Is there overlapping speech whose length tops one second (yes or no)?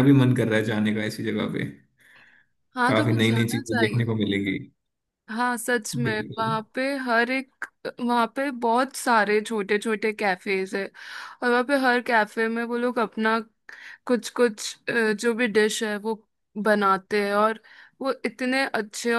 yes